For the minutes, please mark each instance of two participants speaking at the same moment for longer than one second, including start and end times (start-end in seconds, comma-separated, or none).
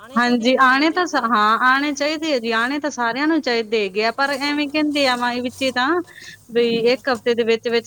none